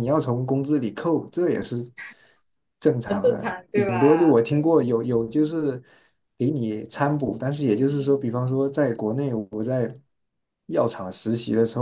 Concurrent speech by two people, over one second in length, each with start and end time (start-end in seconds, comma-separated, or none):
3.0-4.7